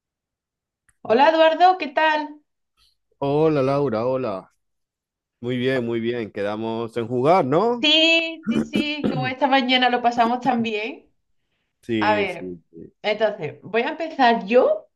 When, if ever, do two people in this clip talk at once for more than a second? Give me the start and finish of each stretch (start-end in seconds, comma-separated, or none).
none